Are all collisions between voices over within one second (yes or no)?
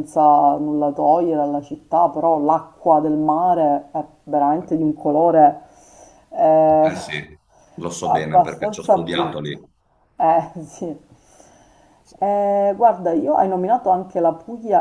no